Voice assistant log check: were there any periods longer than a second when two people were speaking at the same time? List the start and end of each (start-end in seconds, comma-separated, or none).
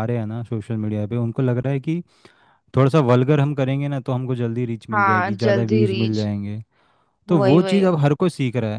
4.9-6.3